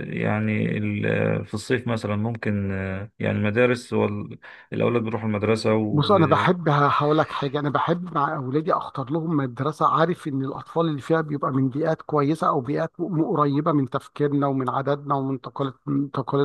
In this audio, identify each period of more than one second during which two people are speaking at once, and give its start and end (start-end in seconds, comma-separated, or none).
none